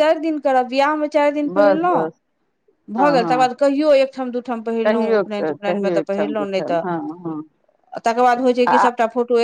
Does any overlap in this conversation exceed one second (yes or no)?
yes